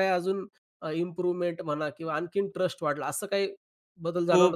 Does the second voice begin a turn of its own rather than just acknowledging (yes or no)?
yes